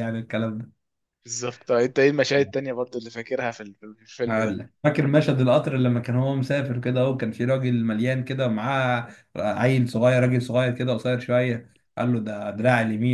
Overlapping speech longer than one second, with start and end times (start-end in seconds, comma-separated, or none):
none